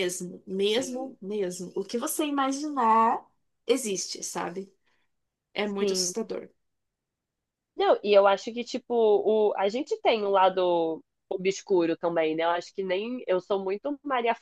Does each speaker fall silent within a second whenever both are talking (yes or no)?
yes